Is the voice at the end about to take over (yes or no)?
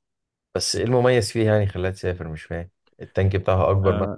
yes